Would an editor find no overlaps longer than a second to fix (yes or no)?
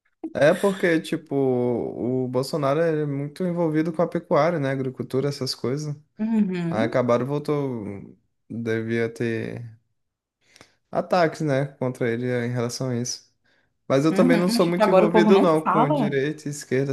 no